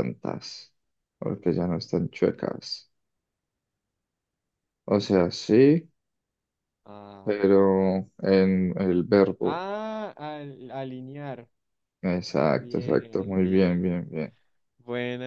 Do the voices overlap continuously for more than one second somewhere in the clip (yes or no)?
yes